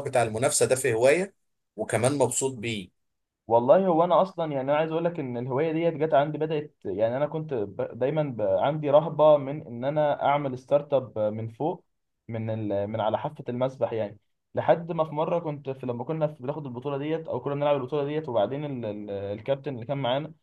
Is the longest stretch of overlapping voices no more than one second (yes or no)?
yes